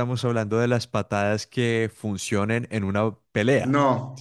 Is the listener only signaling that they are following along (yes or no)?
no